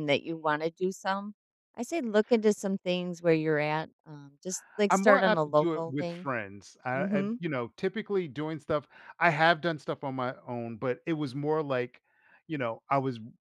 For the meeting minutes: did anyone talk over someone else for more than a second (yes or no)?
yes